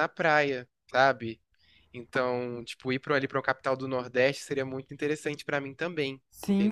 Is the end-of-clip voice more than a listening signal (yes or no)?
yes